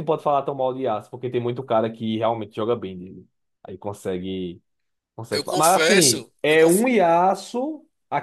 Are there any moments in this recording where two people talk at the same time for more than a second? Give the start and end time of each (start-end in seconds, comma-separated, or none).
5.3-6.8